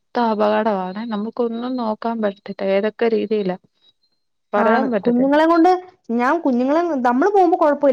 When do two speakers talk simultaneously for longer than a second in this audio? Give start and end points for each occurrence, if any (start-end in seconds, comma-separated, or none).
none